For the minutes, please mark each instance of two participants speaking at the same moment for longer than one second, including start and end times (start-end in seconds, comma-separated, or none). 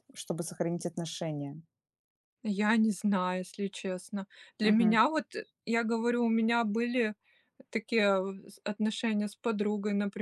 none